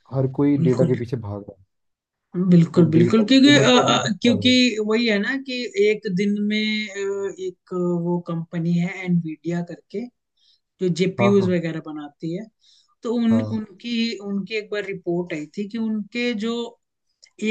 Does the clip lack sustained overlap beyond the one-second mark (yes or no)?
no